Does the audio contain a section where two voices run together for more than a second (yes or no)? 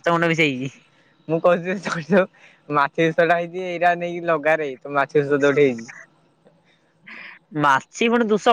no